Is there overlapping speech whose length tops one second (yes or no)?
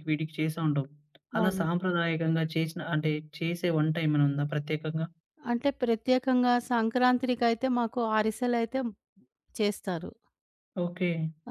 no